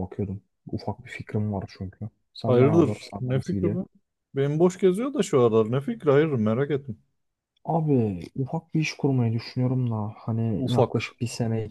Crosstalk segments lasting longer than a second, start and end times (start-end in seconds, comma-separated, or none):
2.5-3.8